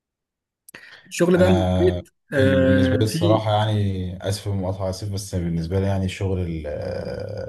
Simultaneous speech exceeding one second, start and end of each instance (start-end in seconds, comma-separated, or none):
1.4-3.4